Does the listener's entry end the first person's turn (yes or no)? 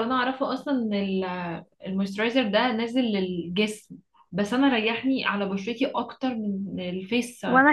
yes